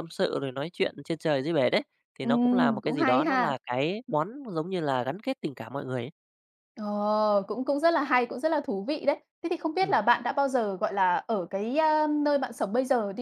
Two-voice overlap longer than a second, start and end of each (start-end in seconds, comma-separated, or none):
2.2-3.5